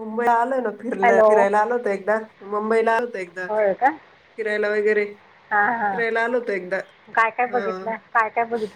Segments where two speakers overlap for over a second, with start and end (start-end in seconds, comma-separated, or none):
none